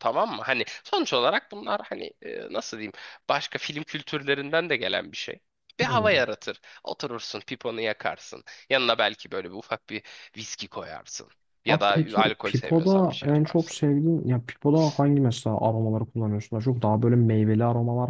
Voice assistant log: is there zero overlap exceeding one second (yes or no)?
no